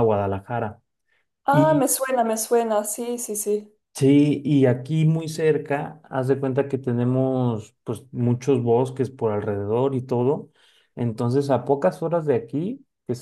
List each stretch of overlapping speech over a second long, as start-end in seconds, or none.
none